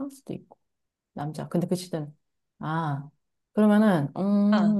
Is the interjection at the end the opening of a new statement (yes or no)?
no